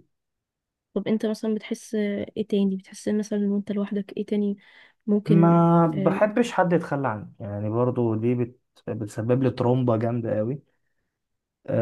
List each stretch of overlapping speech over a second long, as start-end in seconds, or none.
none